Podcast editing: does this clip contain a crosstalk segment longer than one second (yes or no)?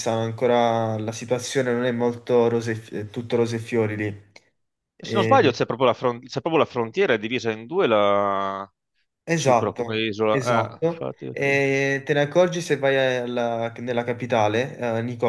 yes